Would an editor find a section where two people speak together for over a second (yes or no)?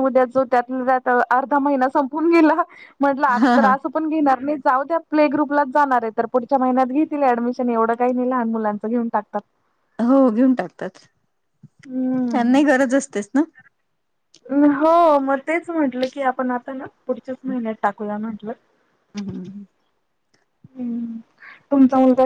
no